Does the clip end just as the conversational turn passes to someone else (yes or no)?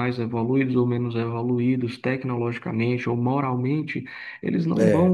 no